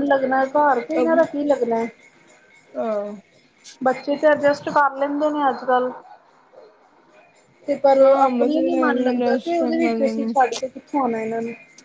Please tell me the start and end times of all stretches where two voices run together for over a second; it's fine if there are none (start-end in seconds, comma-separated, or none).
8.0-10.2